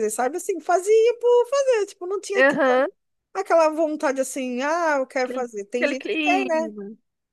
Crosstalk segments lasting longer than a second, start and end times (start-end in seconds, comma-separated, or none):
5.2-6.7